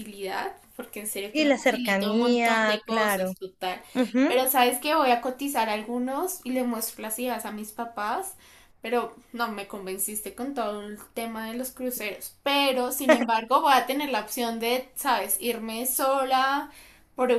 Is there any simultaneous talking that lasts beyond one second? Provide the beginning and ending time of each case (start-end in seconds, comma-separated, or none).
1.3-3.3